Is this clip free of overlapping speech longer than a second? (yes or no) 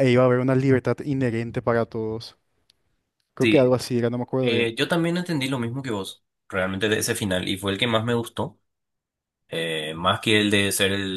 yes